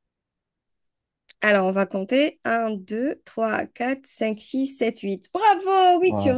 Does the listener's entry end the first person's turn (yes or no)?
yes